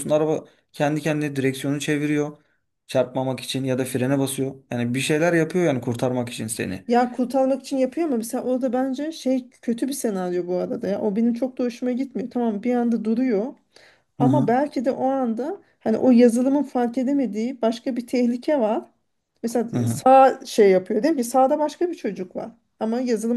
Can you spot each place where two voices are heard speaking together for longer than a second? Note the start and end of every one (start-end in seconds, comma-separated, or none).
none